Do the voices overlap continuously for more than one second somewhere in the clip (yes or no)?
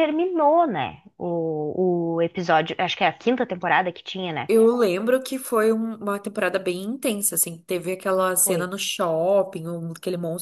no